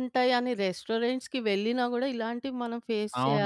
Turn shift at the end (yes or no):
yes